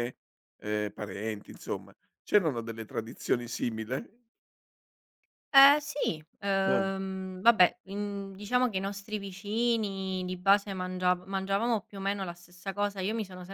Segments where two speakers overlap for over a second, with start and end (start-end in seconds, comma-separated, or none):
none